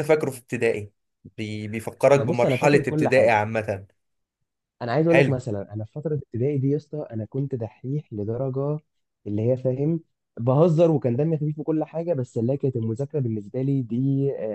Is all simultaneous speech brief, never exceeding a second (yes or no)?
no